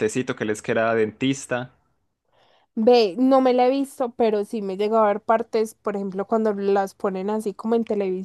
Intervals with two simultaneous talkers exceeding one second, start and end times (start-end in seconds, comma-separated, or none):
none